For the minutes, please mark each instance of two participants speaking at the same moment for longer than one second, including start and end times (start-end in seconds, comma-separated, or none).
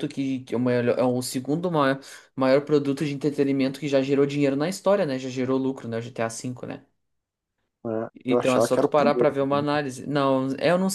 8.2-9.6